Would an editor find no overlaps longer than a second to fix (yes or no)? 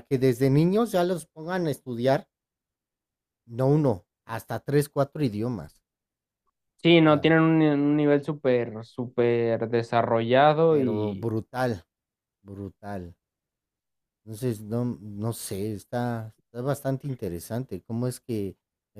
yes